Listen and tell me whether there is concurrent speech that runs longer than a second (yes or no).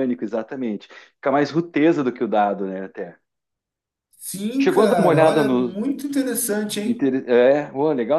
yes